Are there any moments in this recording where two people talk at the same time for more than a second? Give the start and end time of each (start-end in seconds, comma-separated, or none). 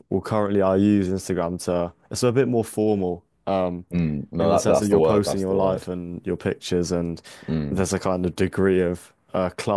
4.4-5.9